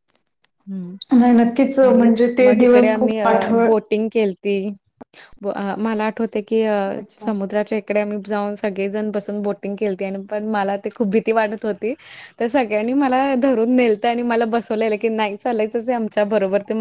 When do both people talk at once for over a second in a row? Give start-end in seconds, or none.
none